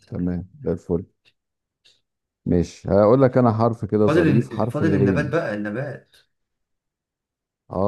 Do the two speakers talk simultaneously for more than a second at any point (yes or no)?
yes